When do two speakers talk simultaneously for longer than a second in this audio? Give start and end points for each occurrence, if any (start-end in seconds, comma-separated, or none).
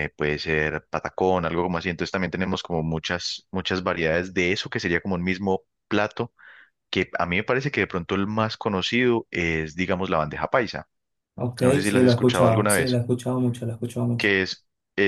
11.6-13.0